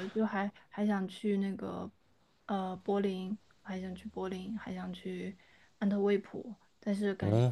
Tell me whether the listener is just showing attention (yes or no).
yes